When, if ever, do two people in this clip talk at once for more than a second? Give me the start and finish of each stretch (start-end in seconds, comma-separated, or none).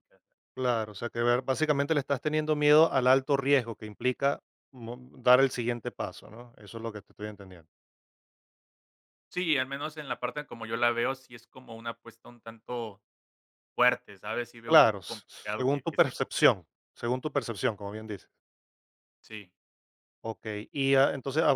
14.7-16.6